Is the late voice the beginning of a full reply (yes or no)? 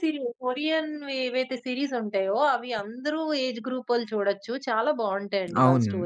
yes